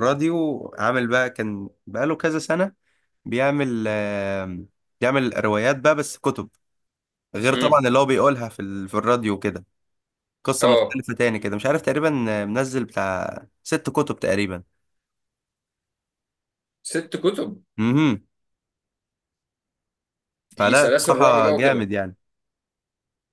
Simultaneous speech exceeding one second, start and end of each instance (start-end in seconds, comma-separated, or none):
20.5-21.9